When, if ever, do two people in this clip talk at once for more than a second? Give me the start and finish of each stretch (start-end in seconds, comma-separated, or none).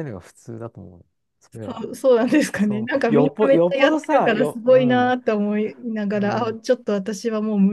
2.6-5.2